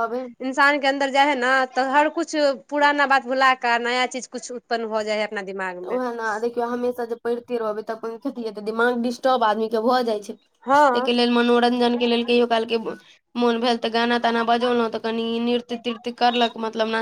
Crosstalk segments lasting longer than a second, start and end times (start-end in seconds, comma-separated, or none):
none